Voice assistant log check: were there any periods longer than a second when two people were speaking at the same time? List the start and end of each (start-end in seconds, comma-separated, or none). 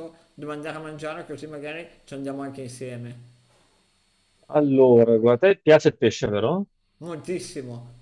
none